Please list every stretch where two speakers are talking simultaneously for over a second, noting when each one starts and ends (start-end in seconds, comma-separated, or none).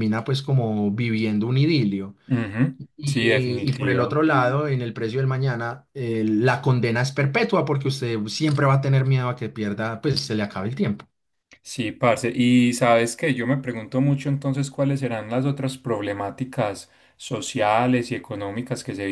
3.0-4.2